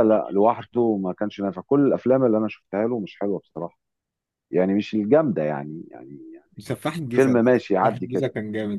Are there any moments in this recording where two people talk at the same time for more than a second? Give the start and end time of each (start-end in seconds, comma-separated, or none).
6.6-8.2